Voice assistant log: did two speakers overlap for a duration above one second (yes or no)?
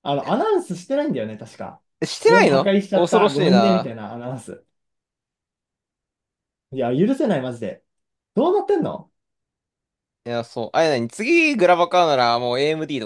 yes